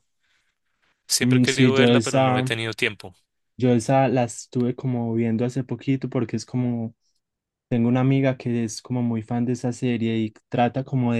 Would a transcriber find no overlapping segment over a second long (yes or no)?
no